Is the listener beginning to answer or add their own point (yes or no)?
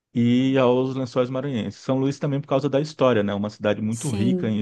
no